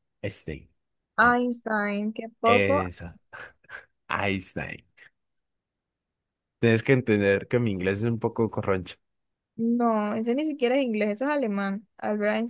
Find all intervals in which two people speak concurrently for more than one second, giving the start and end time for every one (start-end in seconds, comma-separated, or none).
none